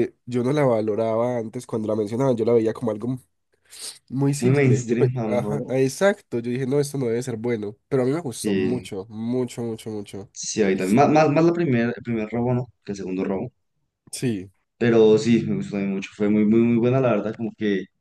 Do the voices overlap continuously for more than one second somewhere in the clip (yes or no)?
yes